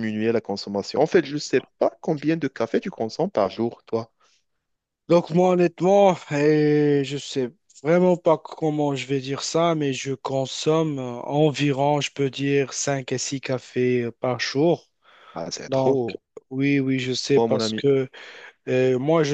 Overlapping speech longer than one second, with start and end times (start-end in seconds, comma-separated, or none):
none